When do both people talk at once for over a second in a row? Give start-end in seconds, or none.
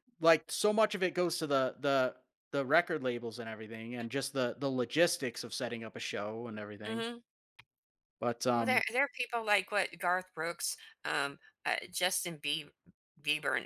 none